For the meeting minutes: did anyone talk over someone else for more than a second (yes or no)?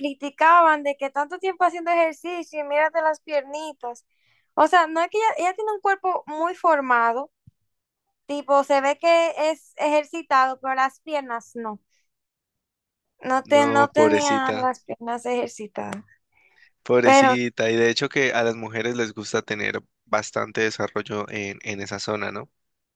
yes